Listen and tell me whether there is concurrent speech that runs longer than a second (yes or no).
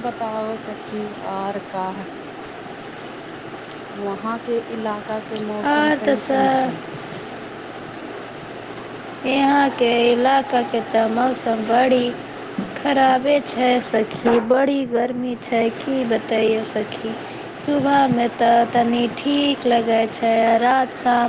yes